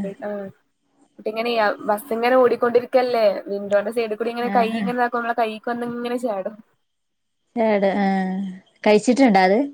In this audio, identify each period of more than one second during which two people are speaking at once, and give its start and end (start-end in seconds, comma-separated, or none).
none